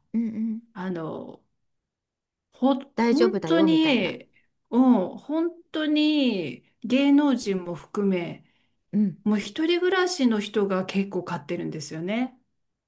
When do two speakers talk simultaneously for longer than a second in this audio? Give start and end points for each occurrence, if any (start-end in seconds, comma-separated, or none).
3.0-4.2